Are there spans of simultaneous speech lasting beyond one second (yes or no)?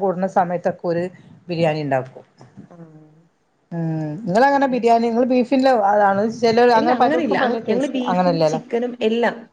yes